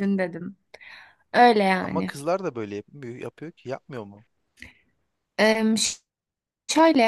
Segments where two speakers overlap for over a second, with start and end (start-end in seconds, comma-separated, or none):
none